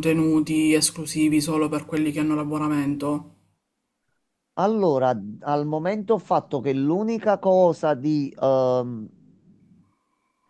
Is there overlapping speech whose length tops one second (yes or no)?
no